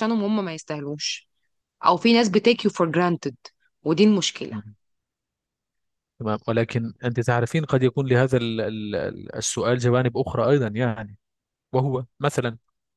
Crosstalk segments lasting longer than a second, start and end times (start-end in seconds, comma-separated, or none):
none